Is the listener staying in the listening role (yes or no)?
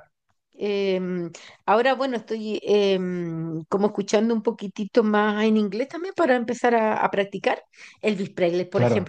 yes